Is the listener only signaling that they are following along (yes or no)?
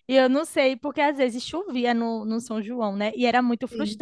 yes